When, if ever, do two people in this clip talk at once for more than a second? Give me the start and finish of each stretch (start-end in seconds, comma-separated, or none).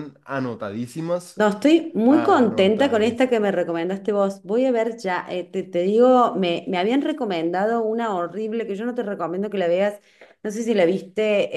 2.1-3.3